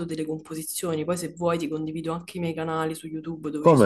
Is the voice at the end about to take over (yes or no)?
no